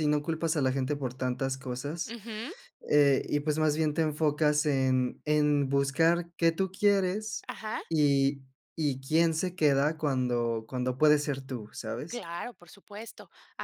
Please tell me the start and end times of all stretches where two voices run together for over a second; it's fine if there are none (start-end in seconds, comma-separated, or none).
none